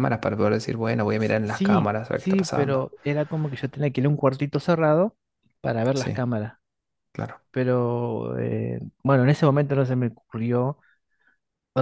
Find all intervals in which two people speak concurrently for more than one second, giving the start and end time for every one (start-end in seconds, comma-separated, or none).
1.2-2.9